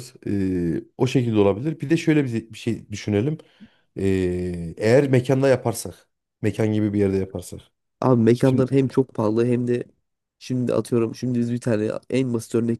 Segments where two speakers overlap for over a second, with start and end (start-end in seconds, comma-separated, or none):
none